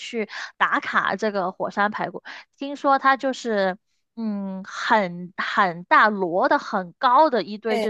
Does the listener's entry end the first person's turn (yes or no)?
no